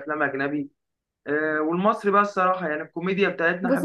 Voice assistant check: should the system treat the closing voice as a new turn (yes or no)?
yes